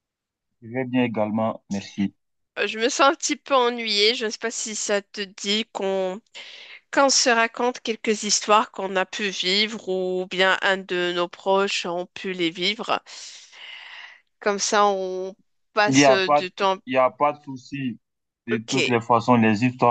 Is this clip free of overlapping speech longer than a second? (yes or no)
yes